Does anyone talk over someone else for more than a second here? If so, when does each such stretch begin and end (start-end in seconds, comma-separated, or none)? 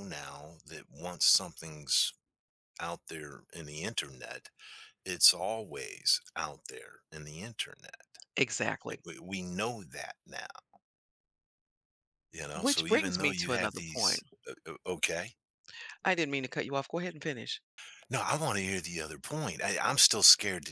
12.6-14.2